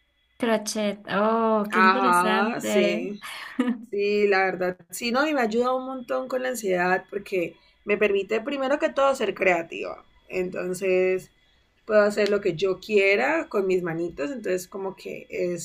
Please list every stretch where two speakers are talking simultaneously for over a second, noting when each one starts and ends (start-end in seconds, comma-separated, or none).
1.7-3.1